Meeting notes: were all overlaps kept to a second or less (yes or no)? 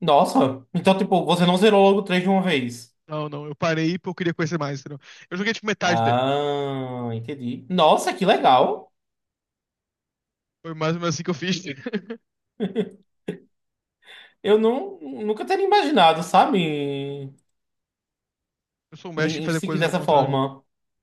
no